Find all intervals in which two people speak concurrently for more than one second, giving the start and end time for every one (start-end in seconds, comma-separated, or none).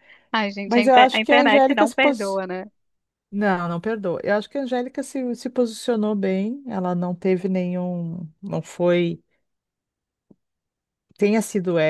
0.7-2.4